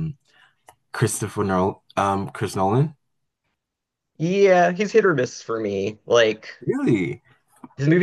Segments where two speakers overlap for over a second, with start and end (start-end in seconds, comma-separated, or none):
none